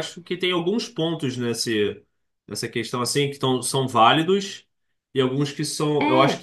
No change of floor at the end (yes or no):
yes